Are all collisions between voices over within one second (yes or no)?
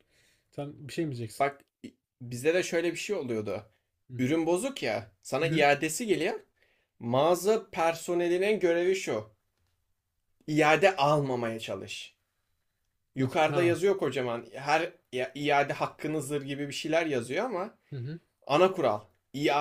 yes